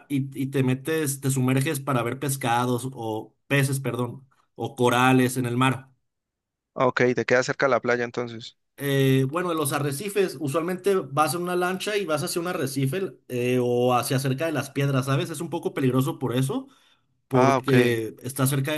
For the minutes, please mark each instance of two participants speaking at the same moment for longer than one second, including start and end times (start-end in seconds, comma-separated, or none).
none